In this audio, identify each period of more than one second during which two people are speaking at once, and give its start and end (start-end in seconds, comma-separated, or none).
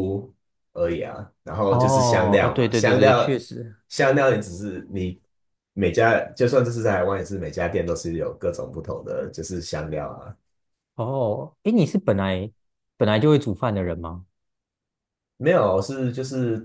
1.7-3.4